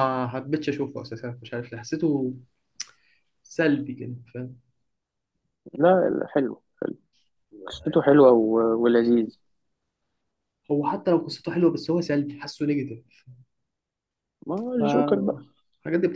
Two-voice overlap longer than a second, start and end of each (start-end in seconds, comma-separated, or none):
none